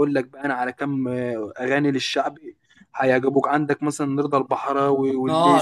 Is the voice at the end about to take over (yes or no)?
yes